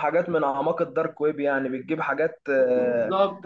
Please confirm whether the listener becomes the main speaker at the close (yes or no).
yes